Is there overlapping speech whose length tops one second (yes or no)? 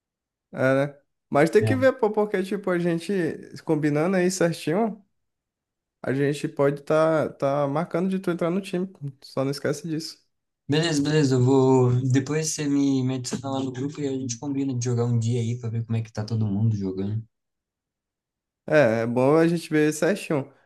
no